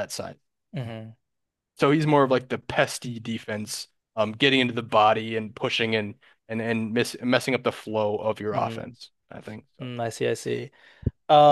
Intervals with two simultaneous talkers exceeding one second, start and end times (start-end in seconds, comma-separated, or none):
none